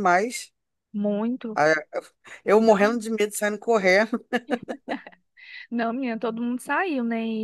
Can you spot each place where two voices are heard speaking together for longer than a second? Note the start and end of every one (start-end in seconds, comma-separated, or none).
none